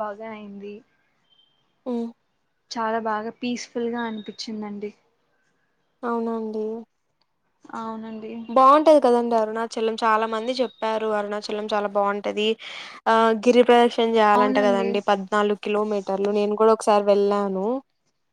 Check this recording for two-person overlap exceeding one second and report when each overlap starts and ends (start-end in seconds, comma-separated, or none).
none